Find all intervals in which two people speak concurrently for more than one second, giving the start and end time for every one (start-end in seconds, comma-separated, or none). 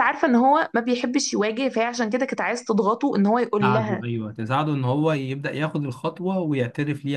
none